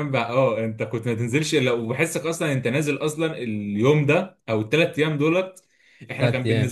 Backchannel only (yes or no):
yes